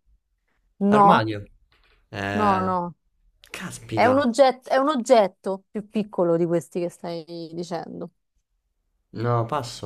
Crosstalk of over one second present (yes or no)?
no